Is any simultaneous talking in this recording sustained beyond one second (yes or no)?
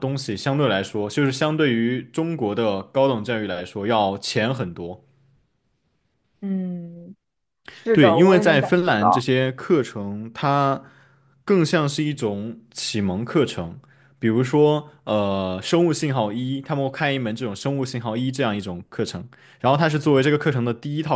yes